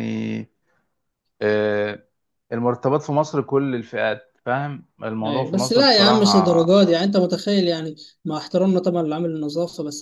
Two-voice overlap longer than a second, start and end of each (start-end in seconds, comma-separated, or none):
5.2-6.7